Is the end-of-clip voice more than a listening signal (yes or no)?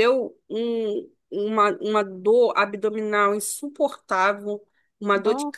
no